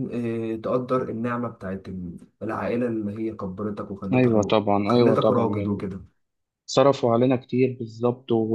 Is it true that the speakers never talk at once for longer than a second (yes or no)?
no